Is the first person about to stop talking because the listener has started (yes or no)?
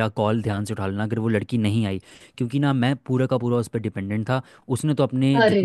no